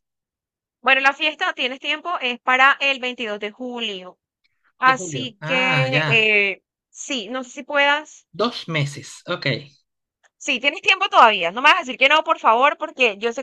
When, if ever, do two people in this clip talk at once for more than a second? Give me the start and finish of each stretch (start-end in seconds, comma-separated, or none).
4.8-6.3